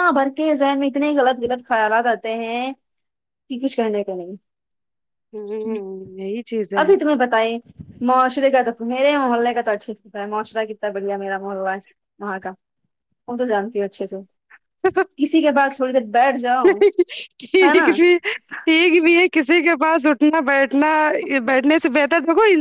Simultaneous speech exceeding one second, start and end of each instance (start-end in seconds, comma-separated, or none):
none